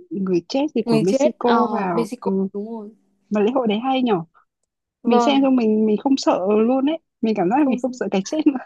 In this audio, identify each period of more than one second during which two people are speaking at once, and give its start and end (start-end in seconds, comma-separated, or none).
0.8-2.5